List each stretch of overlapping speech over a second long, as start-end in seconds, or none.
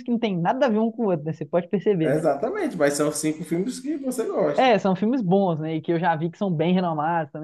none